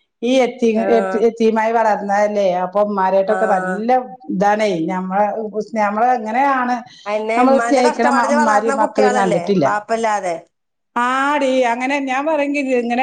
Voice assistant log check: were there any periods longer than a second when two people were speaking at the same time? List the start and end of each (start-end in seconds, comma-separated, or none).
7.4-9.7